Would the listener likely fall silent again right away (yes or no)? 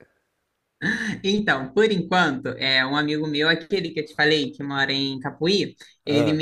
yes